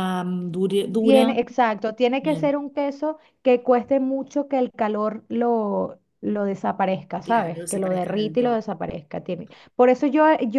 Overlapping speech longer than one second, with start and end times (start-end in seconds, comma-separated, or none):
7.2-8.7